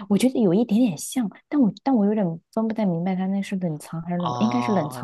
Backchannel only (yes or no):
no